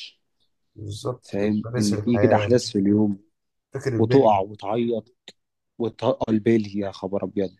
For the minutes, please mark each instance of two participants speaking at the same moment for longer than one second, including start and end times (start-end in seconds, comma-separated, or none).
1.2-2.6